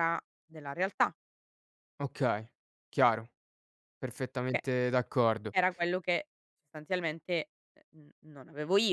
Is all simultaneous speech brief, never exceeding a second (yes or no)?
yes